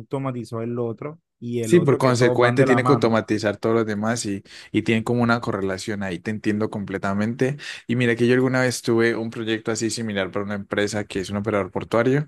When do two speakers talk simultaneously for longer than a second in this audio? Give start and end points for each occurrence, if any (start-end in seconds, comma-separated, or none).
1.6-3.2